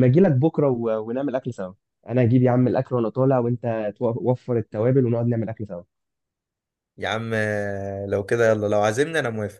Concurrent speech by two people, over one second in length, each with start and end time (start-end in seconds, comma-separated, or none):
none